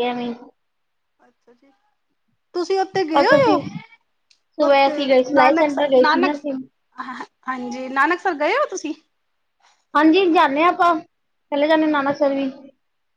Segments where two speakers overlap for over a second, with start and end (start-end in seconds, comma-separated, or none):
4.7-6.3